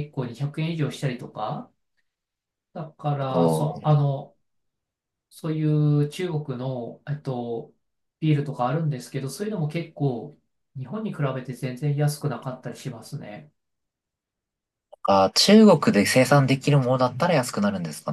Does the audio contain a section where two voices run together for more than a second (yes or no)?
no